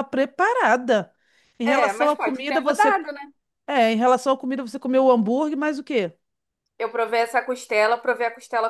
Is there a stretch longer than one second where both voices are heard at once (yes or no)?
yes